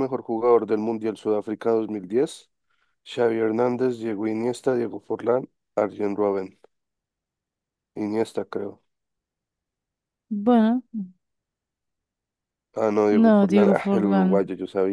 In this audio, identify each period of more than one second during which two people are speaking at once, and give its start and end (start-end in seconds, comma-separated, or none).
13.1-14.4